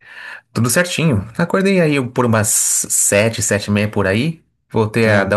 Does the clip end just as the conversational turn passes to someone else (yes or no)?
no